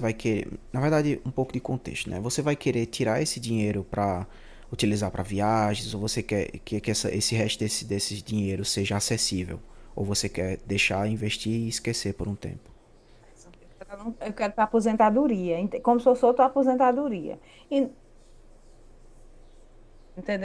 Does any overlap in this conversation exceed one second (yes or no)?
no